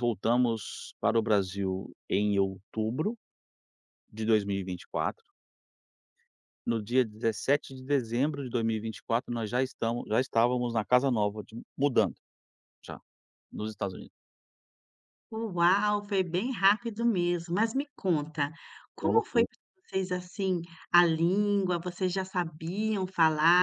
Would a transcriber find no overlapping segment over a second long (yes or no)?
yes